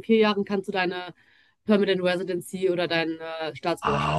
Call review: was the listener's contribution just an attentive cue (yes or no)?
no